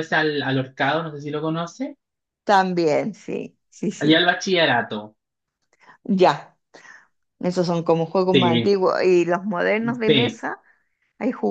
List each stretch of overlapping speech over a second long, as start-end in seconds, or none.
none